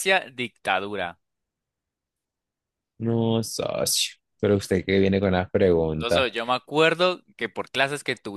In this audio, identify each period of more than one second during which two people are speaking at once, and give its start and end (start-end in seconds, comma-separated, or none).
none